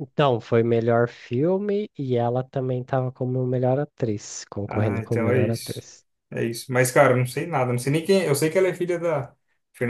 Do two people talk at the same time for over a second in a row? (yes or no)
yes